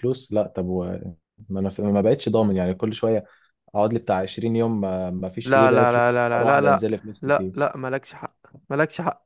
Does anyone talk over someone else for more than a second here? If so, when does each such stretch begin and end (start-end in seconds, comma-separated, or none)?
5.5-7.7